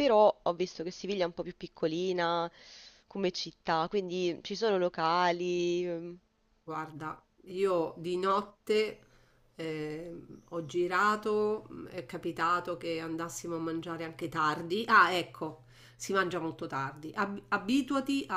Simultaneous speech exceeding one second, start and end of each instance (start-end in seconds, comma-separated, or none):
none